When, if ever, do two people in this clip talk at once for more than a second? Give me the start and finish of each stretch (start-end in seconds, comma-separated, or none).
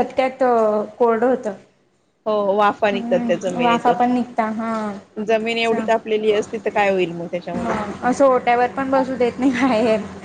2.9-4.2